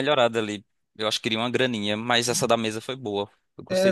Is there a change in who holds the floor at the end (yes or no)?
yes